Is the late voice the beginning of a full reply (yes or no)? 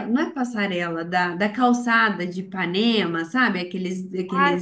yes